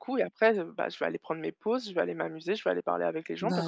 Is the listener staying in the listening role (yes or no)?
no